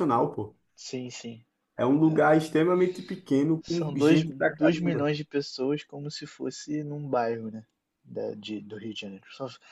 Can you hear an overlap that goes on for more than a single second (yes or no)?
yes